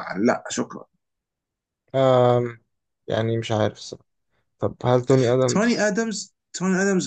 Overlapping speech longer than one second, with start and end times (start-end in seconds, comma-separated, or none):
none